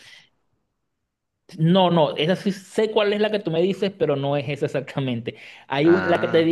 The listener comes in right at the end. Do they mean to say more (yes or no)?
no